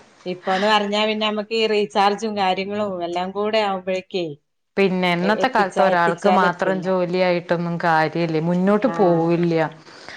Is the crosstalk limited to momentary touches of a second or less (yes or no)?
no